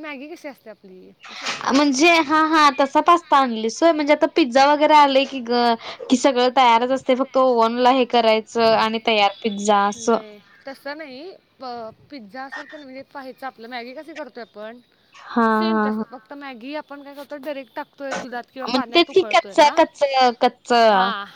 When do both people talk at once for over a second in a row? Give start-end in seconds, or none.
none